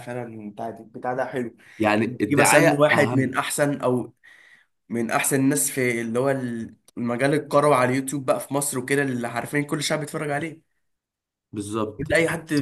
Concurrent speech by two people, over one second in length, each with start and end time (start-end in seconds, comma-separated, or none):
2.1-3.4